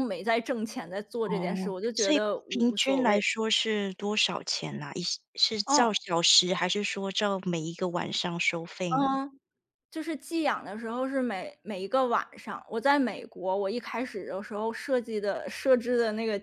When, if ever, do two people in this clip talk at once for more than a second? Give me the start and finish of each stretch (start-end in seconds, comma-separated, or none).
1.2-3.2